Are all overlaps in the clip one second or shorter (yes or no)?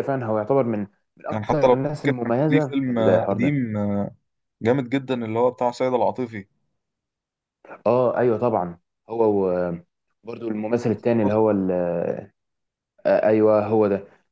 no